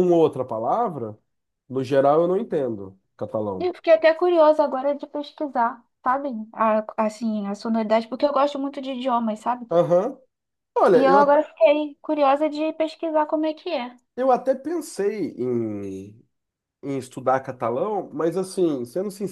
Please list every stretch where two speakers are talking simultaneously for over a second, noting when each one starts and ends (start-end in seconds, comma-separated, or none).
none